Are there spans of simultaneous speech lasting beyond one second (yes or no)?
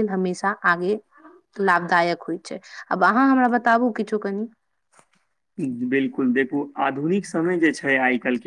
no